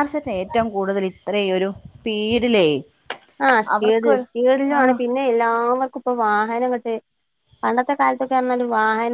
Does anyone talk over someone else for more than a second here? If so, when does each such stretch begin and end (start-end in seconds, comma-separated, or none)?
none